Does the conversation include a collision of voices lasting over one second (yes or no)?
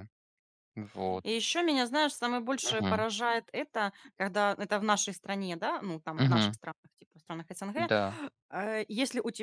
no